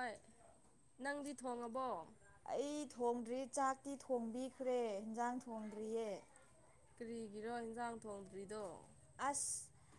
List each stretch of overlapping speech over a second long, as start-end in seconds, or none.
none